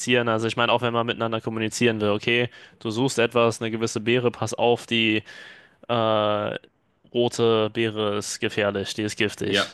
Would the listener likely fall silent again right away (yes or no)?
yes